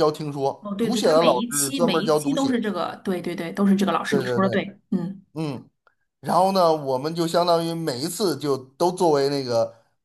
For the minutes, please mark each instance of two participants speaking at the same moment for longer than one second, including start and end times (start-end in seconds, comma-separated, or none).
0.6-2.6